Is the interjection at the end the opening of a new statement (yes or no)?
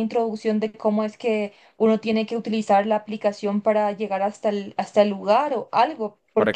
yes